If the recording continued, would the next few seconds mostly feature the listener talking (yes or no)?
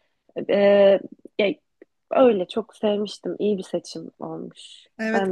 yes